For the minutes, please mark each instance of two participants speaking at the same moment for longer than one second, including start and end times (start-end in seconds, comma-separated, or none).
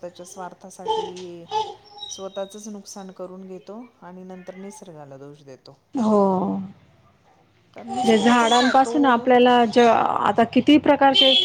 none